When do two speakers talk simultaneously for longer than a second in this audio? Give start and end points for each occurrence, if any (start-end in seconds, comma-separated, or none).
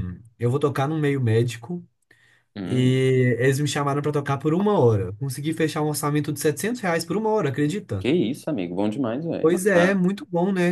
none